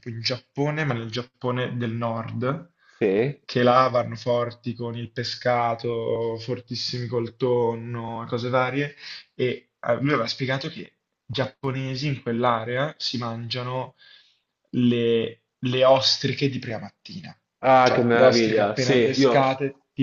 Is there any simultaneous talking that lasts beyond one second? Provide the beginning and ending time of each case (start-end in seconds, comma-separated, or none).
17.8-19.4